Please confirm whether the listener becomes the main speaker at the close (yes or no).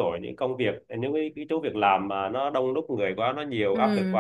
no